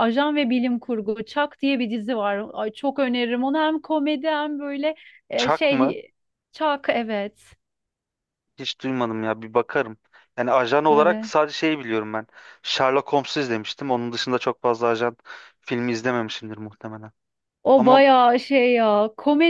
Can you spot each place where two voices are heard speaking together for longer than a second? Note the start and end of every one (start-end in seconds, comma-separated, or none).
none